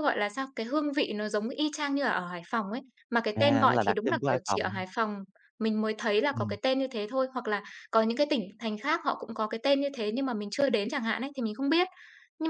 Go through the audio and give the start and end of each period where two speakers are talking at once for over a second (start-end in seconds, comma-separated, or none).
3.4-4.8